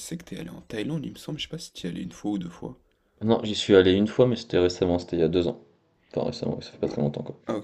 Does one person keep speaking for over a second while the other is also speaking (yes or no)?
no